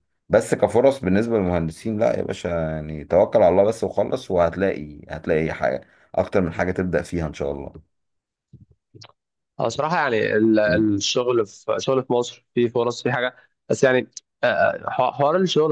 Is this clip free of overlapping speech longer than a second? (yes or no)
yes